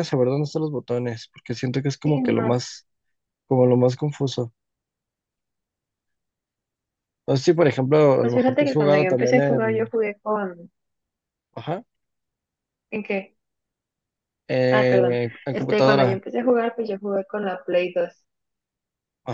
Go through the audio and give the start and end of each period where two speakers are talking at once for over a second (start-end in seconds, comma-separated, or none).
8.2-9.9, 14.7-16.2